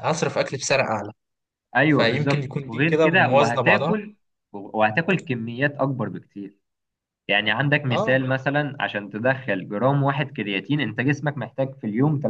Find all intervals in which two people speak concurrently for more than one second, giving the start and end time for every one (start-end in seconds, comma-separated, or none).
1.9-4.0